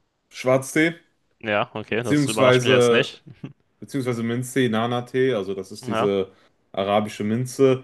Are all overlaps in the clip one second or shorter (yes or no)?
no